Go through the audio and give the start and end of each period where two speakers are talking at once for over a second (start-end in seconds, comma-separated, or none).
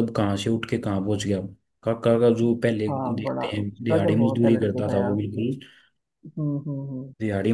2.9-5.1